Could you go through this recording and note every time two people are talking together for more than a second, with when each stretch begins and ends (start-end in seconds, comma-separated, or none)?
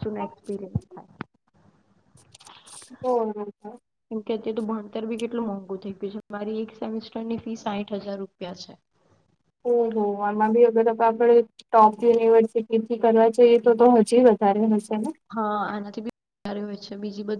none